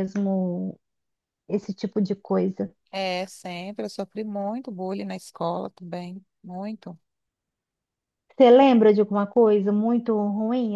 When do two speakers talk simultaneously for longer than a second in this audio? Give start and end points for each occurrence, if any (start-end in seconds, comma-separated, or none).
none